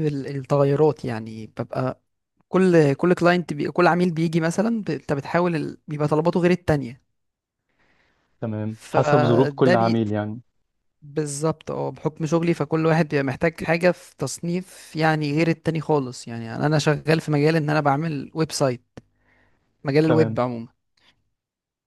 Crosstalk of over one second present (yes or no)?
yes